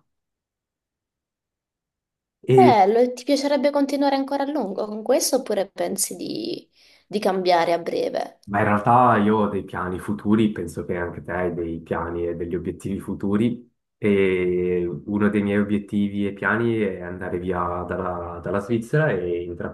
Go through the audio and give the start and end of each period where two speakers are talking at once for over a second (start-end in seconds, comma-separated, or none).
none